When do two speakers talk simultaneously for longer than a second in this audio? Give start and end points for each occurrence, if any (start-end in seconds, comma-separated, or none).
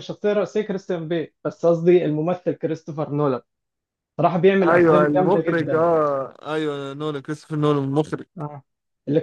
4.7-5.9